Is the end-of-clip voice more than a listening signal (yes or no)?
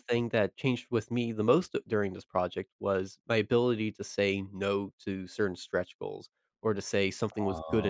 no